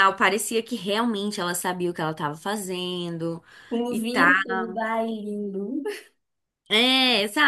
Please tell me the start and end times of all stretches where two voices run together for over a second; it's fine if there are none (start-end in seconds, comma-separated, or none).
none